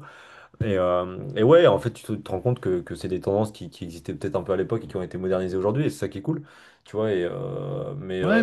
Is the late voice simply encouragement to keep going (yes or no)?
no